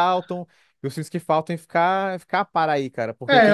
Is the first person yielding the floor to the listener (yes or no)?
yes